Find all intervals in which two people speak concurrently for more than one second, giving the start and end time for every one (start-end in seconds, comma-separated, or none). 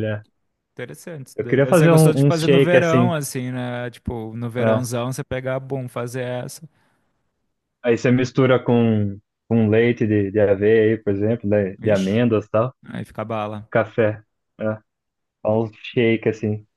1.4-3.1